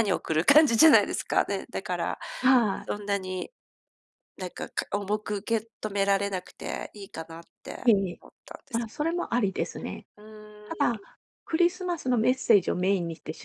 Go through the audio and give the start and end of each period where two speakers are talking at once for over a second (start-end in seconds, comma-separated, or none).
none